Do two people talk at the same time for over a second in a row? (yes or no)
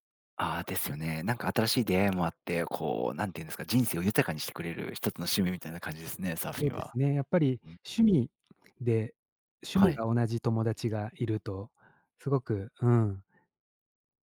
no